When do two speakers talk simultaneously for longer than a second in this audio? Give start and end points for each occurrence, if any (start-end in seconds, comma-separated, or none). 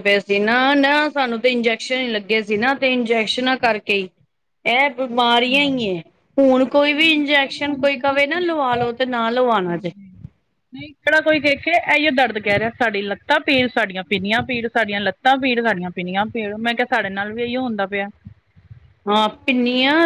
none